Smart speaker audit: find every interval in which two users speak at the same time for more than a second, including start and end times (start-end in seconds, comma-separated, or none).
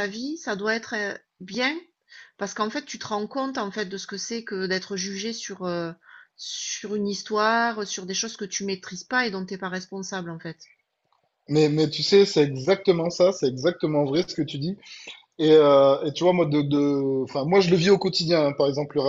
none